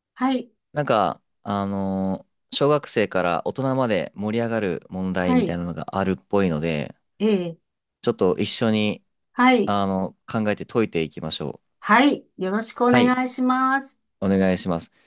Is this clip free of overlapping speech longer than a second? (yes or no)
yes